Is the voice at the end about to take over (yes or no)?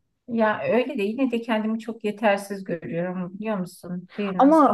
yes